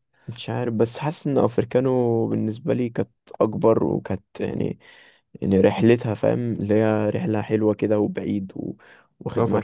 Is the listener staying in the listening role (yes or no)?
yes